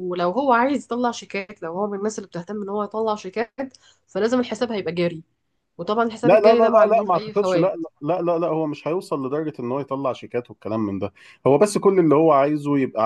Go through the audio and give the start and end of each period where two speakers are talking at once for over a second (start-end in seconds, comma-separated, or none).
6.2-7.7